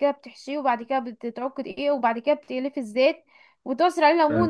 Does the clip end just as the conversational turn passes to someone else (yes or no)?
no